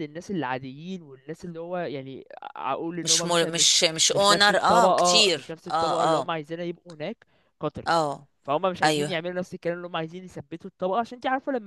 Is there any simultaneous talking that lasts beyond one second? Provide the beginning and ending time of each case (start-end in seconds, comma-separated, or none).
3.0-6.3